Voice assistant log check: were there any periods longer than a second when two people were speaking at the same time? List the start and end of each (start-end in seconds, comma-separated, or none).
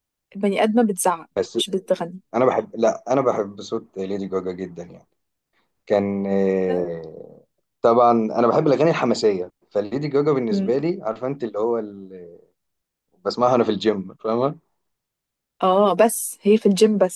none